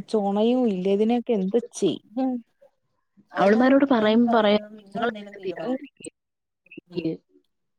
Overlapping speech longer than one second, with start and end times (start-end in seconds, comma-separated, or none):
3.4-5.4